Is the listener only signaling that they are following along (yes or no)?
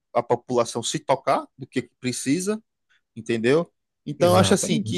yes